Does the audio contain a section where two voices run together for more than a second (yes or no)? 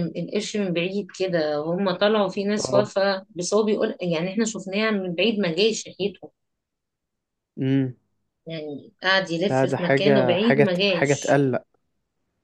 yes